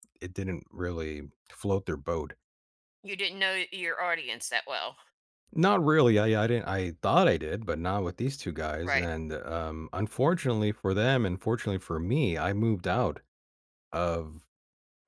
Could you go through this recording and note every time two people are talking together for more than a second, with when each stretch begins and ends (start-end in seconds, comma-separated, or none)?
none